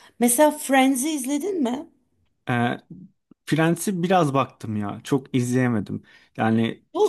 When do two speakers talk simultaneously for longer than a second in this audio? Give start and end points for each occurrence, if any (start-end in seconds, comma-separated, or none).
none